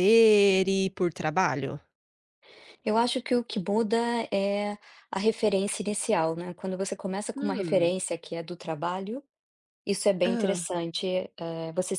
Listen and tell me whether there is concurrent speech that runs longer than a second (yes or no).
no